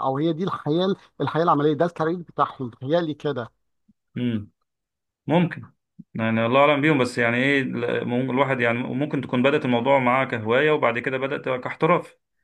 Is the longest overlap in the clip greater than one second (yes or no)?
no